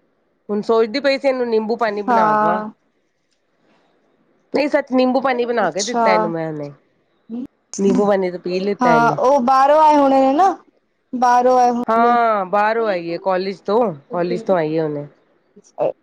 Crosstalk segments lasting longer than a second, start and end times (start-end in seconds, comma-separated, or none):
none